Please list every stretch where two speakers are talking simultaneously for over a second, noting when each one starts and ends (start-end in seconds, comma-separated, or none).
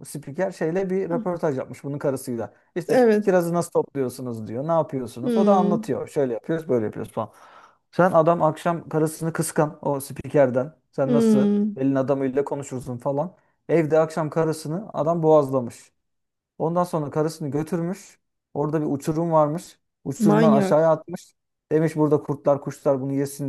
none